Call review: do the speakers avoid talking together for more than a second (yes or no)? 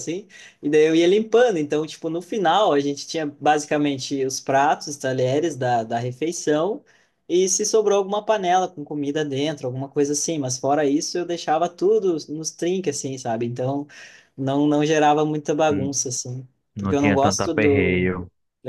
no